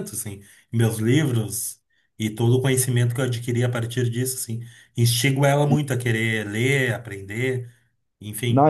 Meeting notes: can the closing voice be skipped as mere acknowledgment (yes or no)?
no